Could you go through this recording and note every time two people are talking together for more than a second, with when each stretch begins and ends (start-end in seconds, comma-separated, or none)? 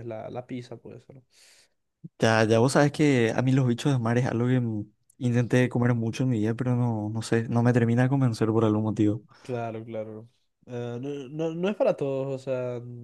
none